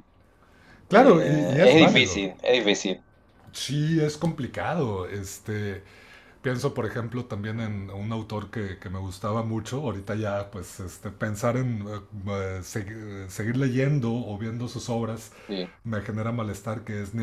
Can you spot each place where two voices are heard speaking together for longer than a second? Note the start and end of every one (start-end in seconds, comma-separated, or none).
0.9-2.2